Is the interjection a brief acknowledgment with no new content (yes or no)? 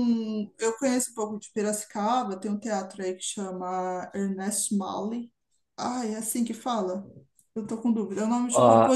no